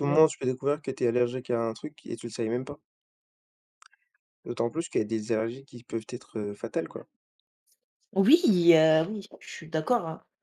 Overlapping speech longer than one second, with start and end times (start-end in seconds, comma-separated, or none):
none